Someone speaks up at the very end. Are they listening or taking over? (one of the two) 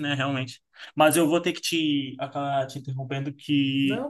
listening